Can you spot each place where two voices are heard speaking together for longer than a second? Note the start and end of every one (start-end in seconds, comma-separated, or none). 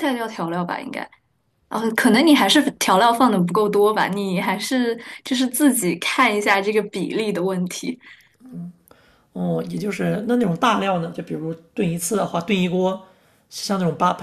none